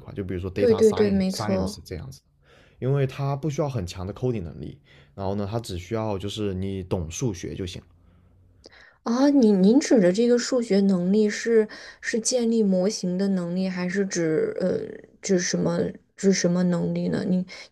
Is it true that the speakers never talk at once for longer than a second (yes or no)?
no